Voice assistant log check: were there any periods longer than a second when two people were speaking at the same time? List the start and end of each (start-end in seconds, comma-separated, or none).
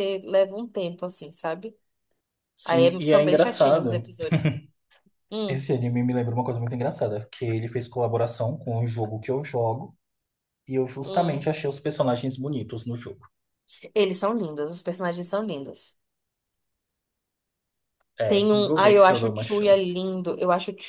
2.6-4.0, 18.3-19.9